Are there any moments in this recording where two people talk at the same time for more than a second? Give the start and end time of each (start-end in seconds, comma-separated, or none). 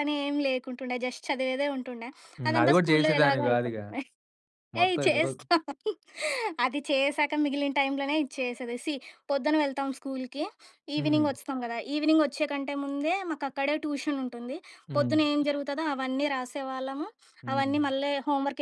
2.5-3.9